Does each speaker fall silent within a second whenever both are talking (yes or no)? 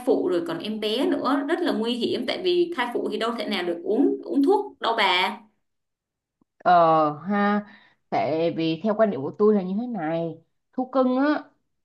yes